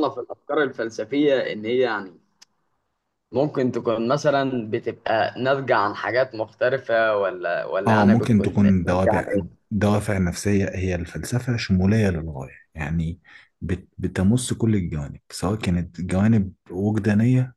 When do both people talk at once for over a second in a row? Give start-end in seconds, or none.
7.9-9.3